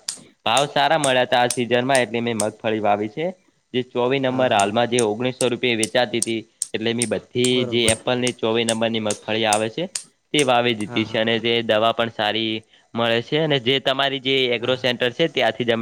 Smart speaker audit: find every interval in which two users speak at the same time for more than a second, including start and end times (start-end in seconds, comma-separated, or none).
none